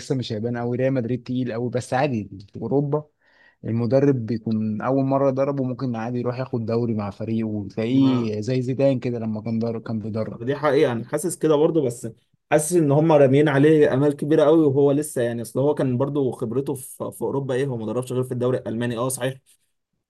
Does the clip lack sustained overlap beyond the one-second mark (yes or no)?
yes